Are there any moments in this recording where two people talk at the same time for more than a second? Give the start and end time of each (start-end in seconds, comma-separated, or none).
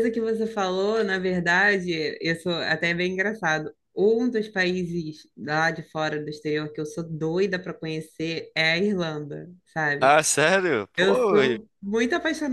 none